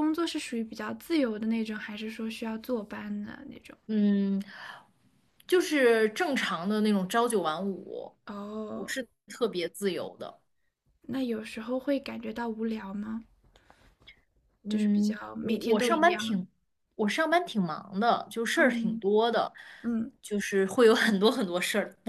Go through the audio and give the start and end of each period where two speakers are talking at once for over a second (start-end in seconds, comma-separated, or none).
14.7-16.5